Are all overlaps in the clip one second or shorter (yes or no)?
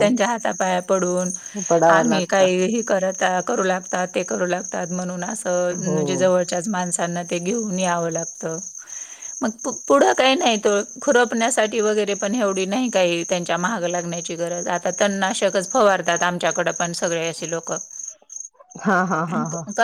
yes